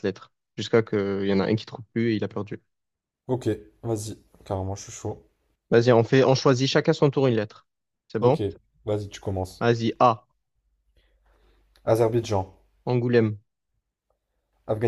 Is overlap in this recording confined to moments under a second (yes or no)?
yes